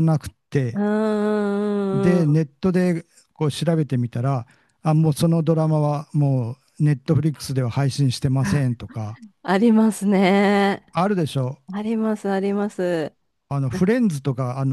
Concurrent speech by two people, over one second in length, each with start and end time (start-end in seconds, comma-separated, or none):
none